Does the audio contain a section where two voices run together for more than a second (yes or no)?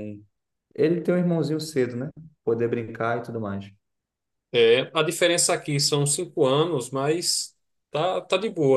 no